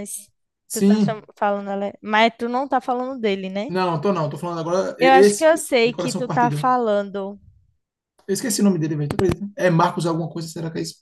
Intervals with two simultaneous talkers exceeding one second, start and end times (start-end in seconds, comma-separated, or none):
5.0-6.7